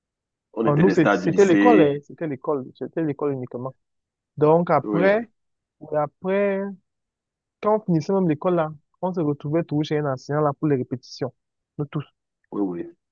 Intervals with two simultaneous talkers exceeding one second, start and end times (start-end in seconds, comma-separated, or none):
0.6-2.0